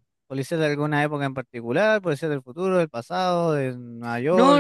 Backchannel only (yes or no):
no